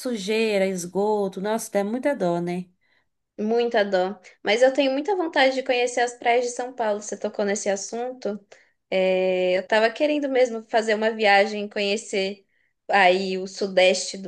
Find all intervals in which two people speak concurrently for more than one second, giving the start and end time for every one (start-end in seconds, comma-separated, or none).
none